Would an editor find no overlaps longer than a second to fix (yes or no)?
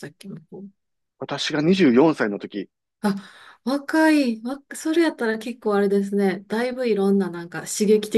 yes